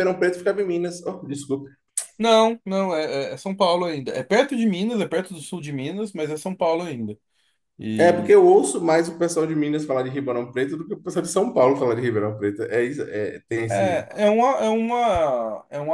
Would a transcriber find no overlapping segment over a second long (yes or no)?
yes